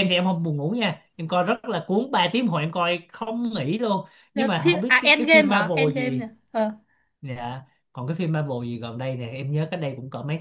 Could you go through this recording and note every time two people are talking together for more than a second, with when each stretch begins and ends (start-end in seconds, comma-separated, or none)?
4.3-6.2